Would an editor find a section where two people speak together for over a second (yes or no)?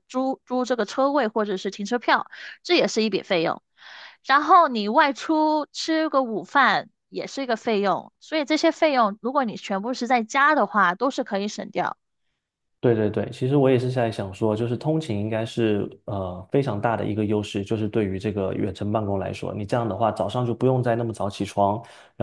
no